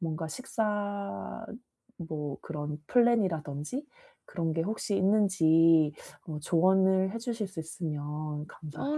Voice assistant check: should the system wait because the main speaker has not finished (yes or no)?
no